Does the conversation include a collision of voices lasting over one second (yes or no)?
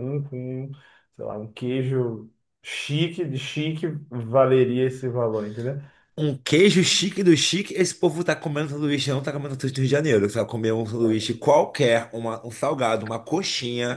no